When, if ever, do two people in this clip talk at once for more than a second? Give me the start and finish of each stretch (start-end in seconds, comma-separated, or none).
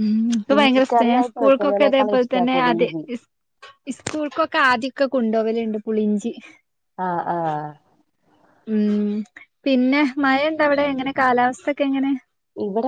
0.5-2.9